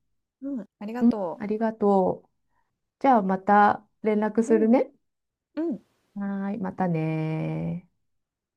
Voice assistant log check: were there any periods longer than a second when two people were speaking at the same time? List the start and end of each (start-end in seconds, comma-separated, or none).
none